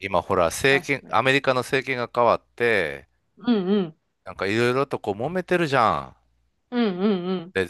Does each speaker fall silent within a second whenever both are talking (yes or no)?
yes